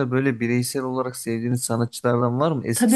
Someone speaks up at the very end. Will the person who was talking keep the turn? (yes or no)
no